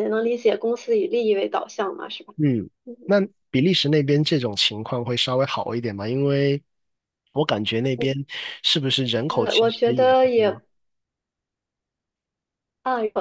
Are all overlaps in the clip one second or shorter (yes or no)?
no